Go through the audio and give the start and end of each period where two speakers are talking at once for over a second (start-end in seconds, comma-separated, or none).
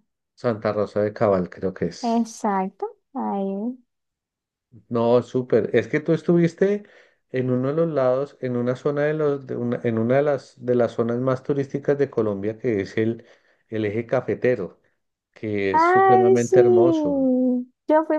15.7-17.3